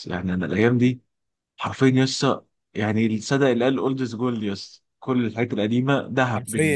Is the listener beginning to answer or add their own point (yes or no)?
yes